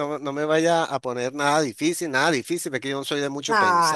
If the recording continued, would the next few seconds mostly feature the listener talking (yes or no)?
yes